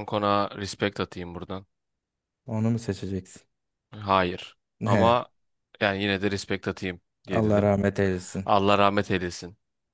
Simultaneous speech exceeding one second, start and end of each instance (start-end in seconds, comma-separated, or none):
none